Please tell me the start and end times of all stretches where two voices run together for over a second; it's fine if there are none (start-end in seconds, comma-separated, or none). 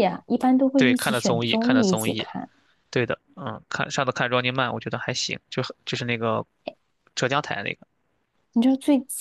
0.8-2.3